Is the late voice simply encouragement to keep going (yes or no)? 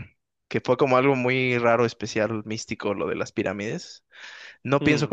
yes